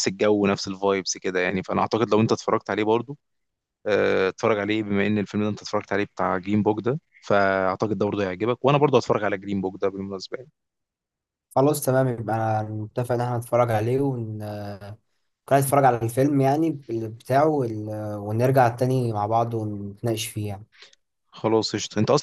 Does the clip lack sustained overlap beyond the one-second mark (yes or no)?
yes